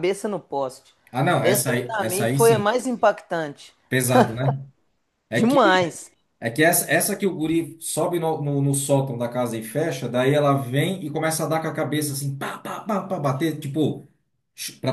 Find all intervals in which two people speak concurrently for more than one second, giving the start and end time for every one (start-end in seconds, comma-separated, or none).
1.4-2.6